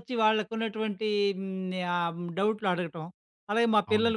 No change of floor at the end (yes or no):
yes